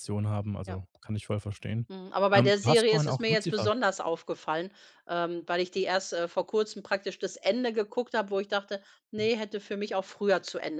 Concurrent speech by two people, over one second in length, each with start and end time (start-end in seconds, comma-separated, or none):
2.3-3.7